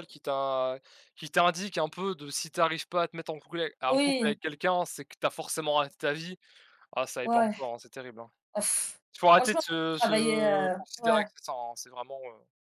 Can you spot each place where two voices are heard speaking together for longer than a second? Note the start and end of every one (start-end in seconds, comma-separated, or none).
9.4-11.3